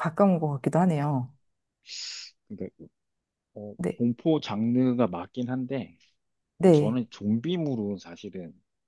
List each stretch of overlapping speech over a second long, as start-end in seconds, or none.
none